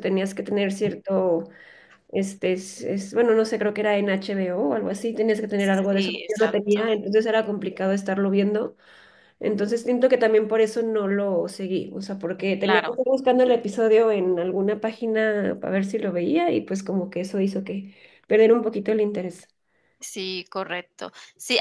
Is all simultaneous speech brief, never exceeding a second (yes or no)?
no